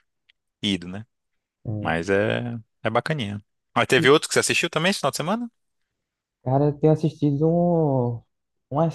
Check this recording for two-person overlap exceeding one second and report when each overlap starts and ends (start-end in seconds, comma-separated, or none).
none